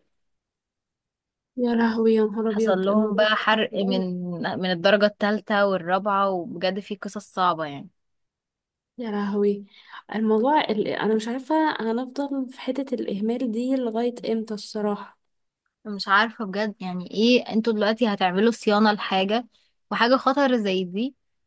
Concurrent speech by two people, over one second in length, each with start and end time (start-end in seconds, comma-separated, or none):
2.5-4.0